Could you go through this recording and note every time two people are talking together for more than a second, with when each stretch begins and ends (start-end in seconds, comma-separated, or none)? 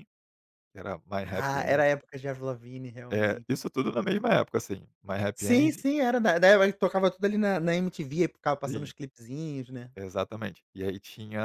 none